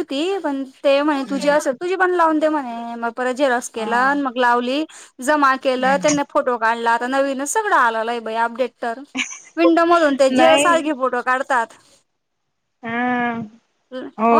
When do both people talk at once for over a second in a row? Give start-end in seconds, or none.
none